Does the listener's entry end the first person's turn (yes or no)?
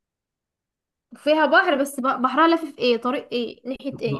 yes